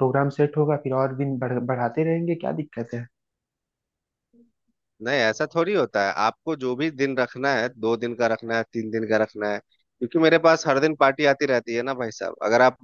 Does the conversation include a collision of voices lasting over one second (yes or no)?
no